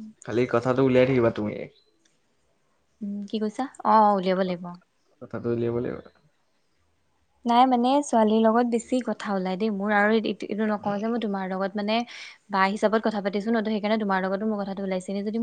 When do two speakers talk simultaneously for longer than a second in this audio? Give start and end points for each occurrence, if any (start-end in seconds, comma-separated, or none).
none